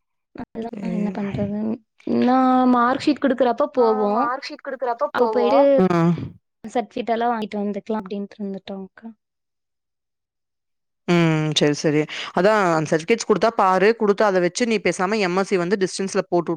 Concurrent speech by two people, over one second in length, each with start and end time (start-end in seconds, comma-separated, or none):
none